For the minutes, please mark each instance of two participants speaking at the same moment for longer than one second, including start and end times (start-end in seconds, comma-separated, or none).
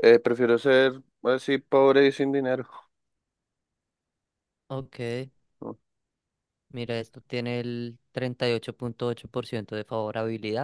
none